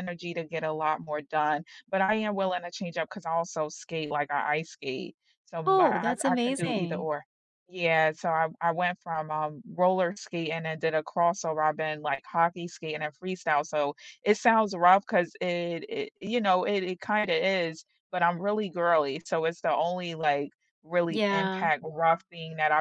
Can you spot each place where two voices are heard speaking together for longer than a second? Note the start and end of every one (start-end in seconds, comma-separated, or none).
5.7-7.1